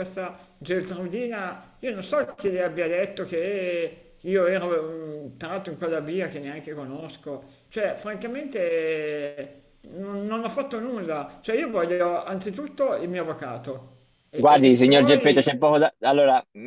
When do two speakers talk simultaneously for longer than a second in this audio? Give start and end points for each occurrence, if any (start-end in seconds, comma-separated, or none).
14.3-15.5